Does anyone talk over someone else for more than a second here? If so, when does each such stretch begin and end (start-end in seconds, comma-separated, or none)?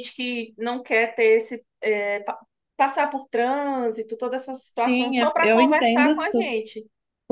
4.8-6.6